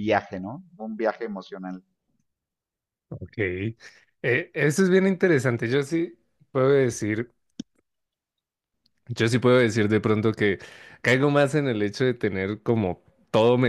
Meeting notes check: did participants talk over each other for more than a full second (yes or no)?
no